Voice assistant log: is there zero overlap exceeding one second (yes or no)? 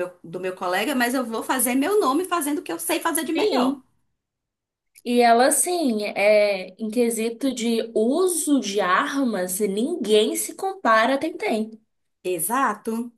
yes